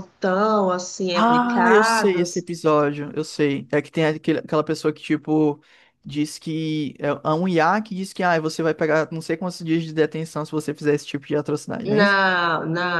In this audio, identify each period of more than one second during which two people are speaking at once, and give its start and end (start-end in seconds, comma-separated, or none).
1.1-2.4